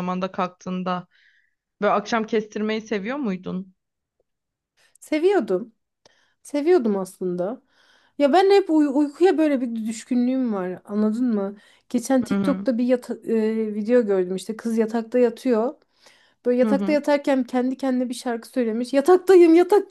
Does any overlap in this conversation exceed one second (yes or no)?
no